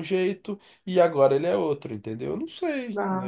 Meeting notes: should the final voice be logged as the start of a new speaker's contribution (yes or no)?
yes